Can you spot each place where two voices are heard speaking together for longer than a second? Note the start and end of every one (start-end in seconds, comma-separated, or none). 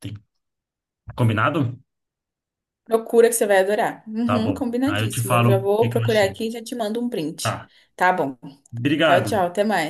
4.2-6.4